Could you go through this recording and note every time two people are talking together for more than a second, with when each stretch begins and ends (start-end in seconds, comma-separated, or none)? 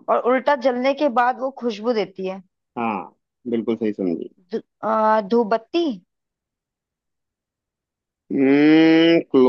none